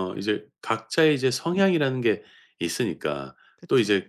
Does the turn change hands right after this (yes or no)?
no